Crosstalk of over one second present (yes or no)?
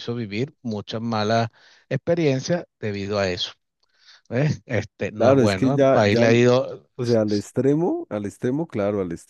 yes